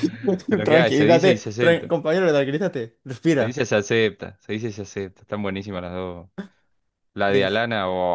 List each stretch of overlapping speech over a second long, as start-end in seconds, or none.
0.6-1.9